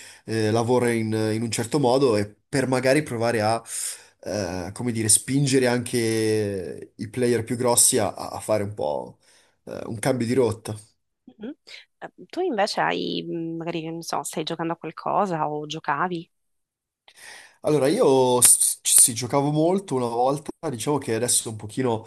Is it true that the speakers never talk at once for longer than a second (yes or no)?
yes